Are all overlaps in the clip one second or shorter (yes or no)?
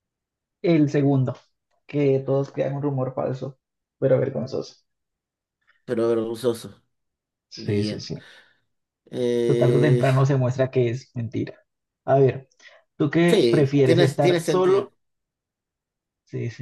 no